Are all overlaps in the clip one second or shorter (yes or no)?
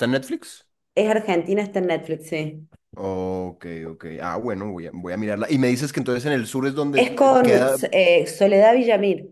yes